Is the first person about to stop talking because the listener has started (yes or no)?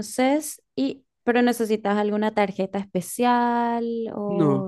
yes